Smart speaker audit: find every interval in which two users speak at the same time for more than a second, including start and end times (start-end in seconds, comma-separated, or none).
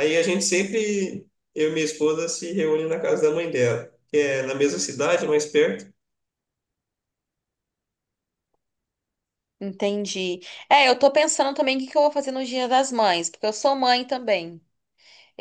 none